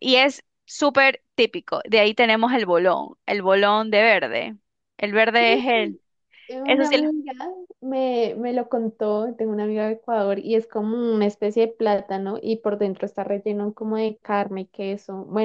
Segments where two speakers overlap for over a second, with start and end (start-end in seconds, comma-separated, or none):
none